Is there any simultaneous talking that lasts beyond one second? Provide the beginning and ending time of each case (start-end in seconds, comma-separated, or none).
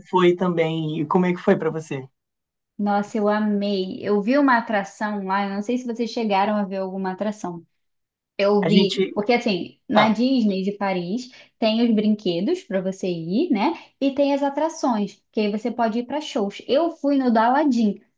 none